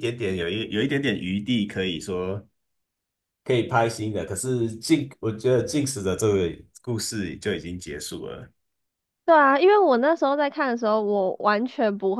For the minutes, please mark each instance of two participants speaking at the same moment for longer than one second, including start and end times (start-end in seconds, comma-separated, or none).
none